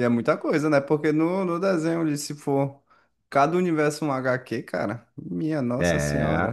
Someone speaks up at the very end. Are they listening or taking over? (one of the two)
taking over